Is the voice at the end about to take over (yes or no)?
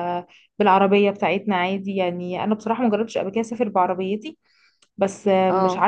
no